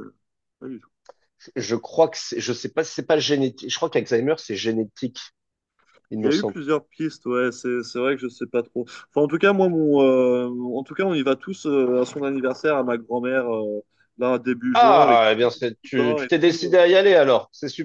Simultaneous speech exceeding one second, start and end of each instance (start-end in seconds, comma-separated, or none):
14.7-16.8